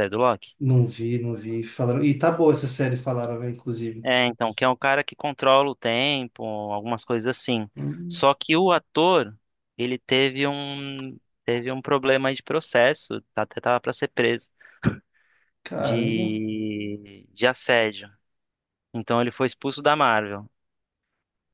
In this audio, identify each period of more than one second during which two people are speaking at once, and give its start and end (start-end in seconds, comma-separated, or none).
none